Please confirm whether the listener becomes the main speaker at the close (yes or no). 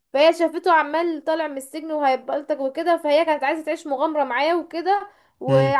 no